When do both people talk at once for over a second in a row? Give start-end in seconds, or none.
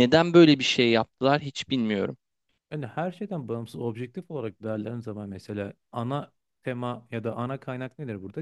none